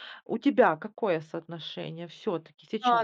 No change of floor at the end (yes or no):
no